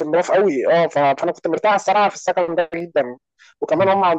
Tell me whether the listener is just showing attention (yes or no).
yes